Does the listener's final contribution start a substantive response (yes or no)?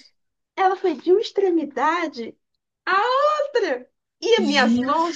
no